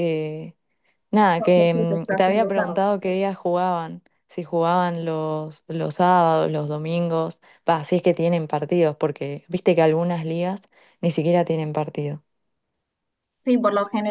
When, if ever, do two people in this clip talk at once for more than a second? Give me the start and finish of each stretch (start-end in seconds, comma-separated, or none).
1.4-2.8